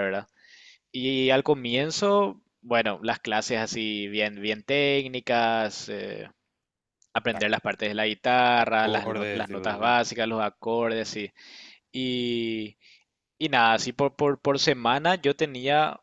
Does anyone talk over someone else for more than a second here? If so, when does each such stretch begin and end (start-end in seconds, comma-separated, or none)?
8.6-9.8